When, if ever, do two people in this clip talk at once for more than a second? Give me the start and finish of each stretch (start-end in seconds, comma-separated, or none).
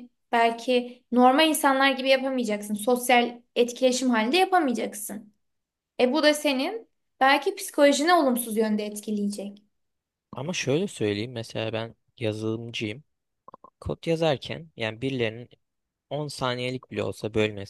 none